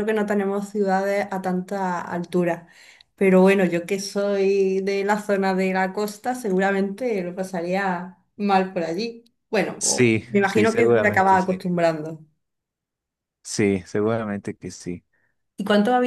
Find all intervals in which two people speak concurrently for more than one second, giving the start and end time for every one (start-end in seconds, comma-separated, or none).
9.8-11.6